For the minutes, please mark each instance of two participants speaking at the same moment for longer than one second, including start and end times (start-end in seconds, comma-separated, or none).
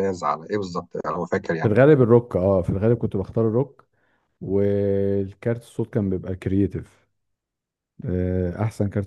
none